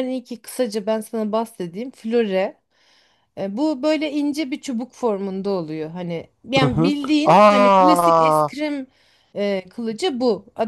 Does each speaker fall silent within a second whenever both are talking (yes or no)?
no